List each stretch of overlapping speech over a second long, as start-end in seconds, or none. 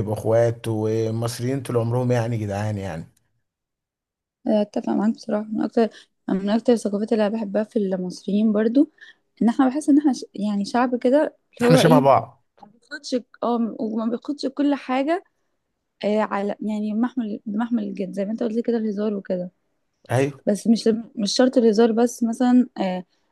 none